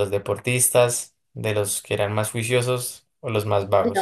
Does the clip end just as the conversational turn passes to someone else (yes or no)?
yes